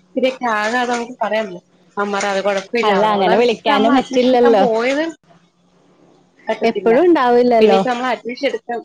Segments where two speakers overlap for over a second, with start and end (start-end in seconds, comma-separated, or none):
2.9-4.6